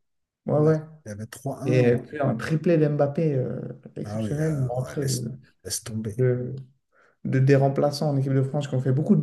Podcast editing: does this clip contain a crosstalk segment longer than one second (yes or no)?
yes